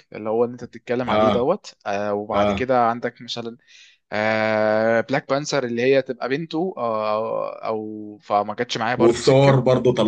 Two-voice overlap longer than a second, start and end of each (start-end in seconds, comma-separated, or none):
none